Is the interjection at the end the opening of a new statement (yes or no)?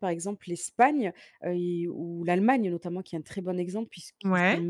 no